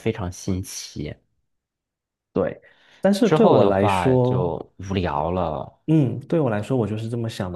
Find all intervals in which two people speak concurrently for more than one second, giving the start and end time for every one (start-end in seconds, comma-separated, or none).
3.2-4.5